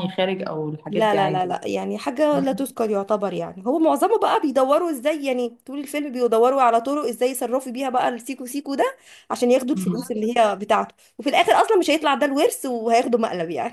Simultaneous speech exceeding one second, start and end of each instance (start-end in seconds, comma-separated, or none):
none